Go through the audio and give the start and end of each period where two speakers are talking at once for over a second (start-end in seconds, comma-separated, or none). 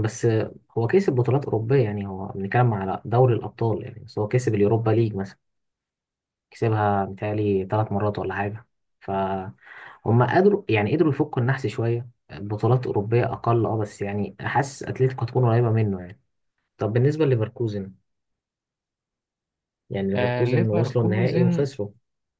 20.1-21.7